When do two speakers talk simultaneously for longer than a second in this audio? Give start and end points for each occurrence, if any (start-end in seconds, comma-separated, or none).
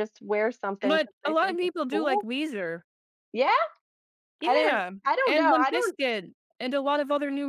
0.8-2.3, 4.4-6.0